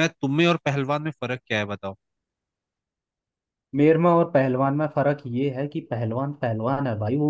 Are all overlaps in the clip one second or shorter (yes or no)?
yes